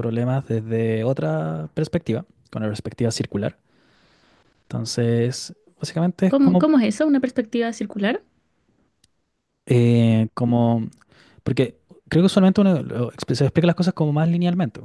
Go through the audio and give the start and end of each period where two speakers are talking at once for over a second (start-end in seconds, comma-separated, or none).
none